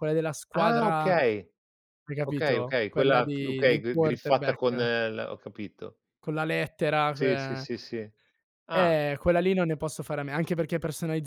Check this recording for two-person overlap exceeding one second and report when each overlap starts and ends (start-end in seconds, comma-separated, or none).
2.3-4.9